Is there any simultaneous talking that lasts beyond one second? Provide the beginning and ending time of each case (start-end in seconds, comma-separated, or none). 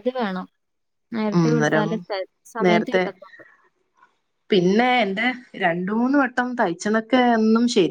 none